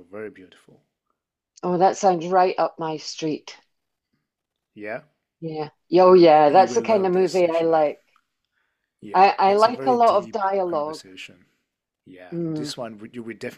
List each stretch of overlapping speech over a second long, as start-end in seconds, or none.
6.5-7.8, 9.1-11.0